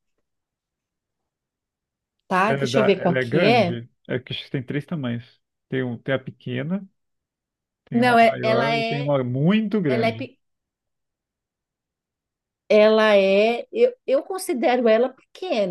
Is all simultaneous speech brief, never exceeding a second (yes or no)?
no